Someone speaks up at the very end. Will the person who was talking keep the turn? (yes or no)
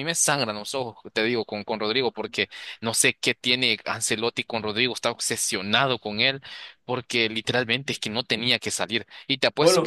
yes